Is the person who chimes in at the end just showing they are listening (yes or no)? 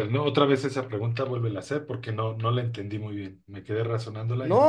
no